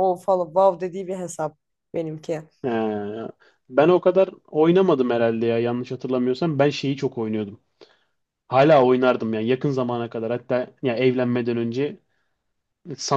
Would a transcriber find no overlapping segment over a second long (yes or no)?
yes